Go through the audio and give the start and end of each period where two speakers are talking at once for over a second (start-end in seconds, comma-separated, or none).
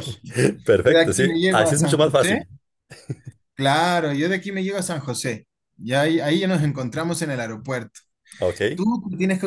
1.0-2.4